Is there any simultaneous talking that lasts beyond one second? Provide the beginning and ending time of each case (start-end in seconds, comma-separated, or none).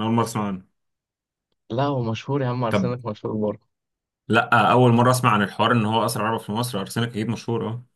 none